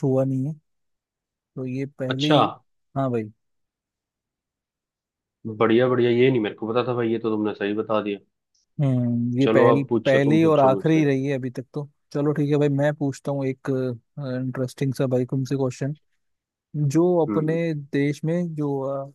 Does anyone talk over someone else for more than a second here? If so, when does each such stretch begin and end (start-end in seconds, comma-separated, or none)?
9.4-11.1